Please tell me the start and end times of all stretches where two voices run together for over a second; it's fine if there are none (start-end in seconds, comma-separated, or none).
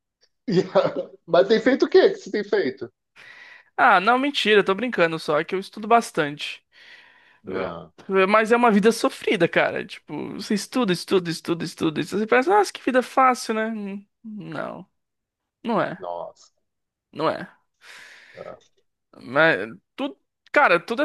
none